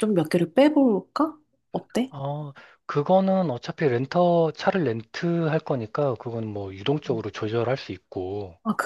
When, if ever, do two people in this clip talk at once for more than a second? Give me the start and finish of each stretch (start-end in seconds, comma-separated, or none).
none